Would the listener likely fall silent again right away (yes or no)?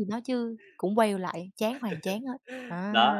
no